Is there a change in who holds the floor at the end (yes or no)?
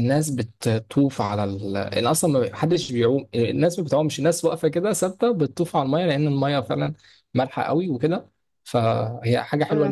yes